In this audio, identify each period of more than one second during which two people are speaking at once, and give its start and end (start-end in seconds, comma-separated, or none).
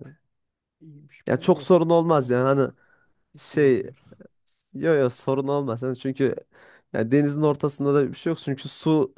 1.3-2.5